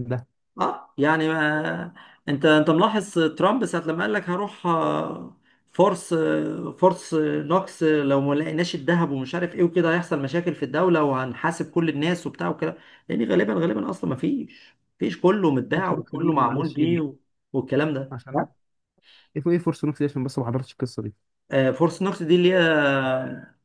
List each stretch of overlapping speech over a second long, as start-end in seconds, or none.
15.7-17.0